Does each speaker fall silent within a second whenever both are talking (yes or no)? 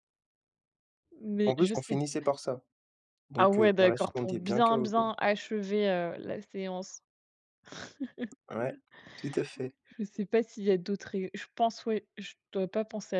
no